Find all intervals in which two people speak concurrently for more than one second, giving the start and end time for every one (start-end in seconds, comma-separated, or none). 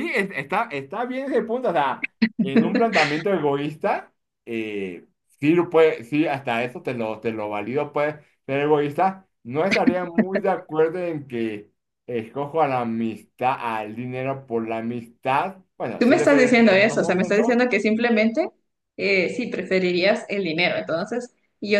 16.0-17.6